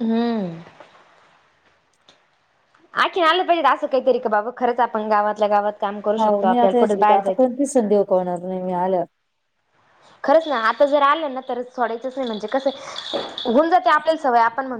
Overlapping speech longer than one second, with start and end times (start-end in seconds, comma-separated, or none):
6.2-7.5